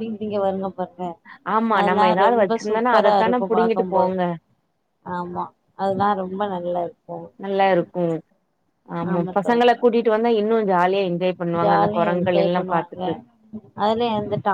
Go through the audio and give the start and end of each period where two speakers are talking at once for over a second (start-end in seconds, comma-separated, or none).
1.8-4.1, 11.6-13.0